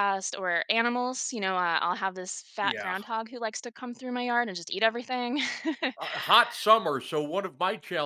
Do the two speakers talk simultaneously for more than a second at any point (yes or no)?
no